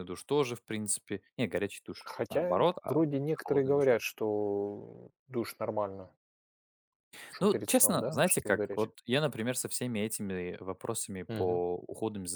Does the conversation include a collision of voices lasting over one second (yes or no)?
yes